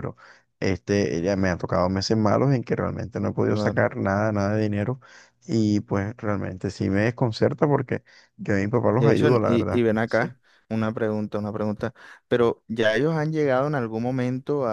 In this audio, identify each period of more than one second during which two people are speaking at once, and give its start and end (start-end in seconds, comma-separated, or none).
9.0-10.4